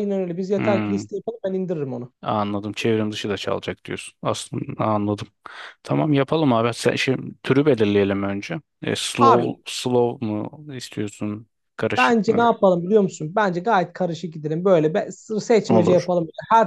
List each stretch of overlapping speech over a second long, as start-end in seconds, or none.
none